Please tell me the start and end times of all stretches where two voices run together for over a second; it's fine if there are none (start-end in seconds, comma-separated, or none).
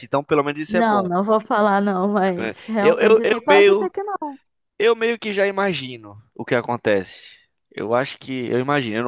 2.4-3.9